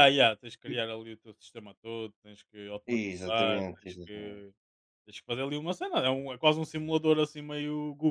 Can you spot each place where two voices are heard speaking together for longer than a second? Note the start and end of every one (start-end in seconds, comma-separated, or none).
2.9-4.4